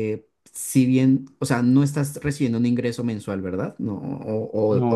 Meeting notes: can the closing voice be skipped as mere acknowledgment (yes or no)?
yes